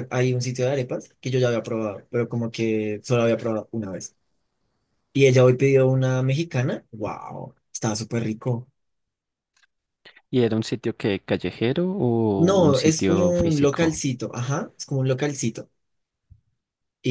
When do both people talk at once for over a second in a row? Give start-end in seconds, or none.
12.3-14.0